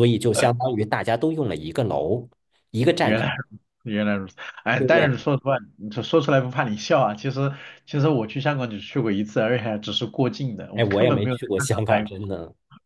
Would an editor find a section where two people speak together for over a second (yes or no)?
yes